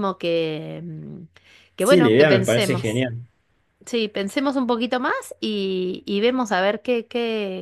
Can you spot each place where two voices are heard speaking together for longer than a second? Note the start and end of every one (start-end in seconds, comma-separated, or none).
1.8-3.0